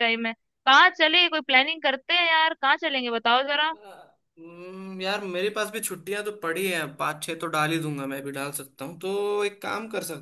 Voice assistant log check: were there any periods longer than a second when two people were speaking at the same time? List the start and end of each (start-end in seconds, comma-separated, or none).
none